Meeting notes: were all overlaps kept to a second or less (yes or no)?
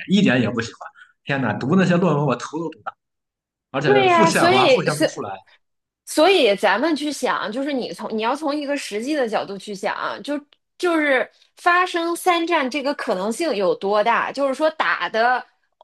no